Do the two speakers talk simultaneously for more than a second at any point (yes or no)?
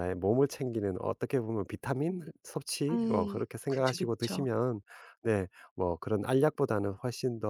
yes